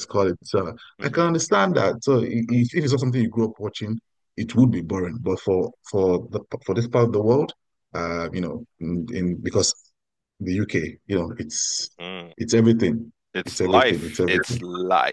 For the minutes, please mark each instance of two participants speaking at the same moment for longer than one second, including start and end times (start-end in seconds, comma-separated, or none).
13.3-14.6